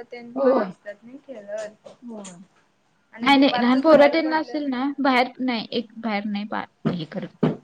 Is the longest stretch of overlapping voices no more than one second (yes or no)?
no